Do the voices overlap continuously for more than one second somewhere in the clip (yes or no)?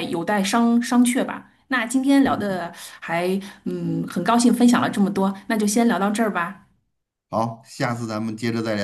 no